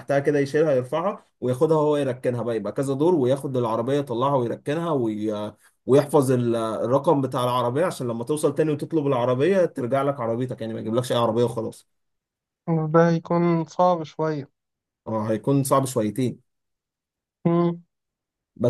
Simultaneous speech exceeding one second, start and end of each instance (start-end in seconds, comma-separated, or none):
none